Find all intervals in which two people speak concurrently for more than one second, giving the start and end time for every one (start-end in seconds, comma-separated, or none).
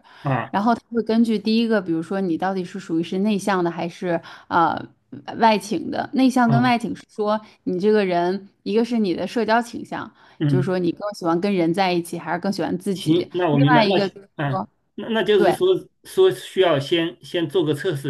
12.9-14.7